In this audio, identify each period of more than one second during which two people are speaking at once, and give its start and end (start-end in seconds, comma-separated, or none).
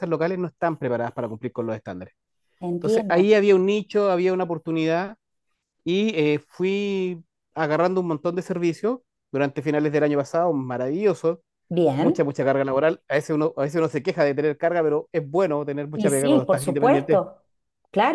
15.9-17.2